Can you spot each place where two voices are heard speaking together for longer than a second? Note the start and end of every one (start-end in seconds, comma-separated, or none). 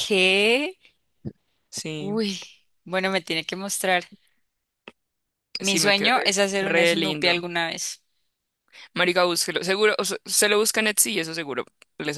5.6-7.4